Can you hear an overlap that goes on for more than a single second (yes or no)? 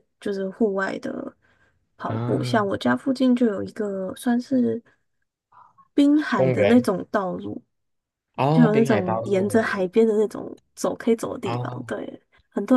yes